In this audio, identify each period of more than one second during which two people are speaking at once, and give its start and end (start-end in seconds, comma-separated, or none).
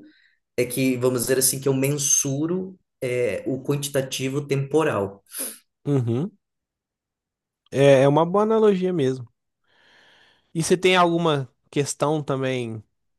none